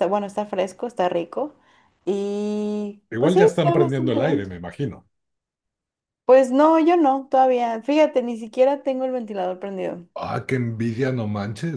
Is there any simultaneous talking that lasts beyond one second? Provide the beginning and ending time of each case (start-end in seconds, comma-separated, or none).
3.1-4.5